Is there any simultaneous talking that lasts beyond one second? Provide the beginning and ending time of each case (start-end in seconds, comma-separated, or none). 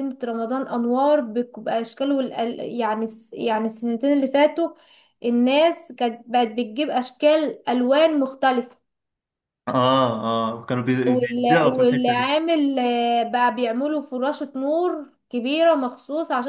11.1-12.3